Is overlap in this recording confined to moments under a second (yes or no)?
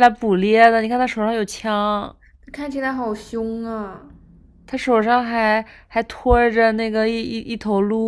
yes